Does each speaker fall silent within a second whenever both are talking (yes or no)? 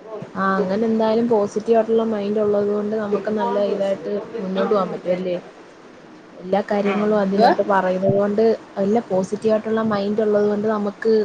no